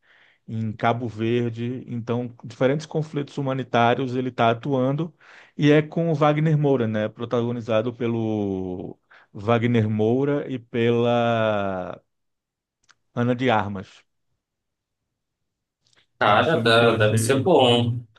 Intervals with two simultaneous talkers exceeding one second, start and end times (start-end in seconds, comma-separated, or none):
16.3-17.5